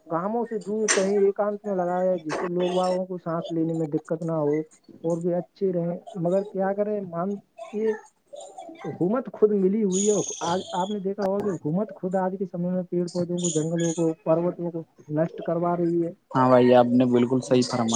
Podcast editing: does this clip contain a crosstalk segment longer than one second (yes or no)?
no